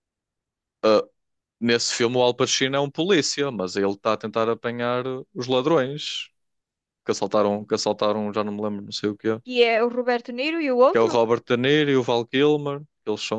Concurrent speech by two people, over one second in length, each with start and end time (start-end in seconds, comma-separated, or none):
none